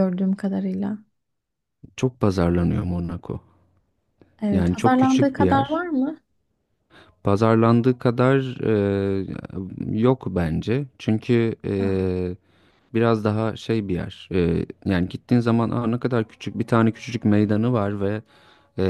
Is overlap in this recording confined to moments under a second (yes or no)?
no